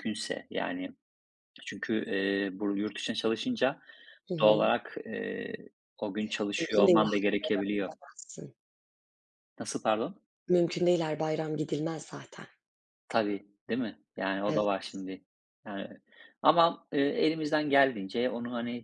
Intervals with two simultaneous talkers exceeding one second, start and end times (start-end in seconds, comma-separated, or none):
6.6-7.9